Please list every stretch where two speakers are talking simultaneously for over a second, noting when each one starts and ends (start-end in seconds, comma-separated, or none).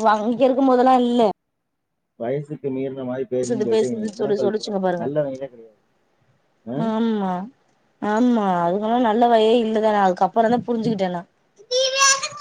3.4-5.1